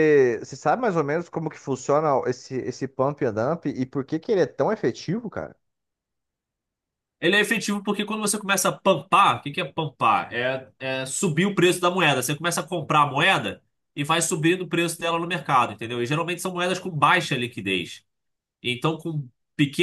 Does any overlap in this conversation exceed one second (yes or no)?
no